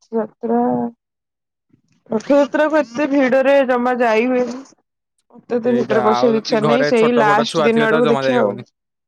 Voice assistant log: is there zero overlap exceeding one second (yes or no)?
no